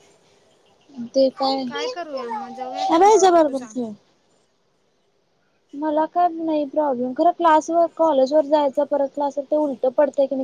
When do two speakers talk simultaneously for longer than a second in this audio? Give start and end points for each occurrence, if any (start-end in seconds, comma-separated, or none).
1.9-3.7